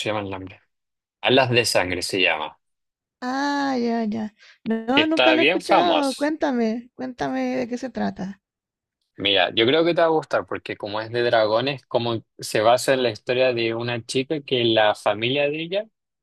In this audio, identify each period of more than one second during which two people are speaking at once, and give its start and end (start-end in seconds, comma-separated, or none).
4.9-6.3